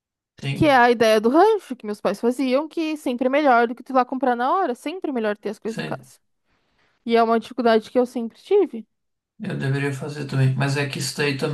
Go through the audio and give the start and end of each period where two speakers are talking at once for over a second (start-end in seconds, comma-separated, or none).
none